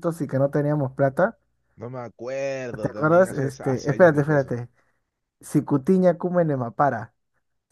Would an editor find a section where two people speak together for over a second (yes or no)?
yes